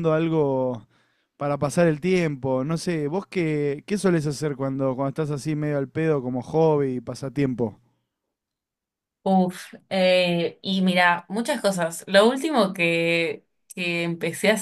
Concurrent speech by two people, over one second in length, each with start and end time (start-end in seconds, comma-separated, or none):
none